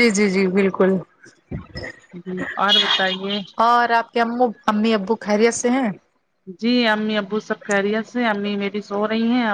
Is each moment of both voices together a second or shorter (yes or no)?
yes